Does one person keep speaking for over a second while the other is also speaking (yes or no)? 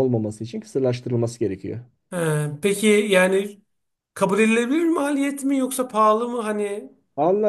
no